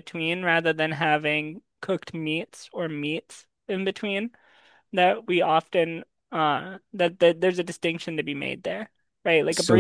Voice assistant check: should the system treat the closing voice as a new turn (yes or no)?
no